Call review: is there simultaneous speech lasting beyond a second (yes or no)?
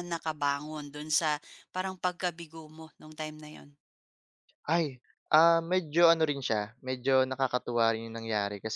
no